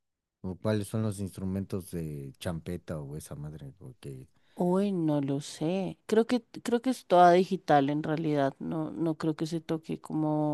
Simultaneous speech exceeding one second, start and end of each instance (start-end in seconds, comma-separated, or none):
none